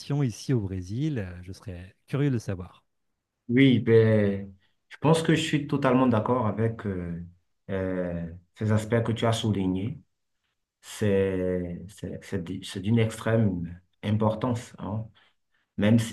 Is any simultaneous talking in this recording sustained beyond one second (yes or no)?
no